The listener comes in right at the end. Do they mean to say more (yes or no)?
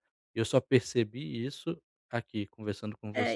yes